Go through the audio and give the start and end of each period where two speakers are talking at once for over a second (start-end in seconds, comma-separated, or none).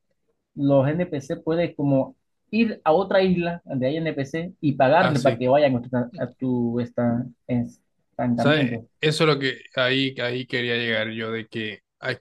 none